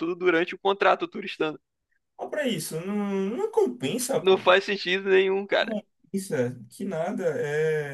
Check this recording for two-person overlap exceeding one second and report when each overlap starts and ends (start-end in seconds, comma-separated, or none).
none